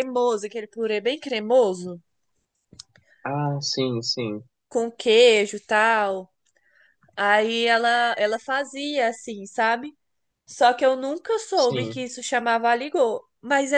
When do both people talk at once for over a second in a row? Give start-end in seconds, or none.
none